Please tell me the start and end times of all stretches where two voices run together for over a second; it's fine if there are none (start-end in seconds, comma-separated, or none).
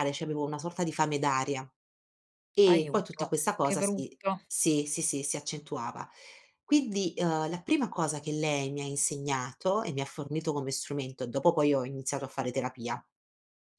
2.7-4.4